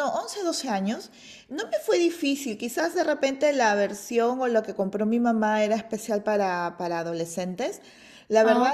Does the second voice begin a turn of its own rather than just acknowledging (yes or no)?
no